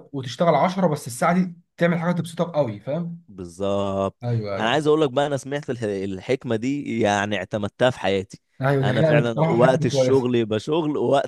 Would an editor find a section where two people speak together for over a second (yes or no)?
yes